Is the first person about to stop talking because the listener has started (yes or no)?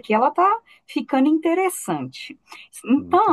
no